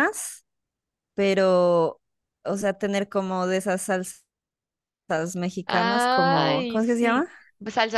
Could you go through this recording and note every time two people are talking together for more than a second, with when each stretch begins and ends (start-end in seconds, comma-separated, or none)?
5.7-7.3